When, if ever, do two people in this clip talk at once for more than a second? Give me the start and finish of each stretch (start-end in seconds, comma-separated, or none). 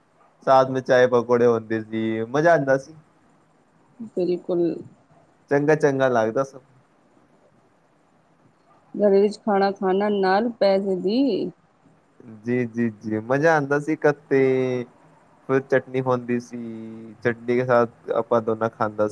none